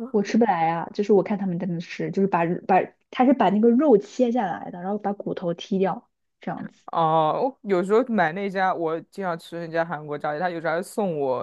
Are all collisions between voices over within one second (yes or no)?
yes